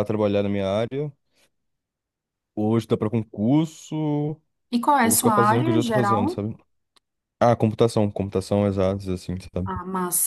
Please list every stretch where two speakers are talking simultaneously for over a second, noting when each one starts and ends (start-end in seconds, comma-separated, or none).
5.0-6.4